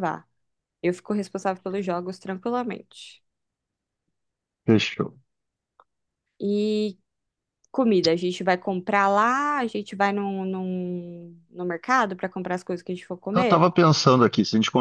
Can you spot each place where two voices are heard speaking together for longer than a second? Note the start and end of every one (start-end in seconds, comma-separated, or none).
none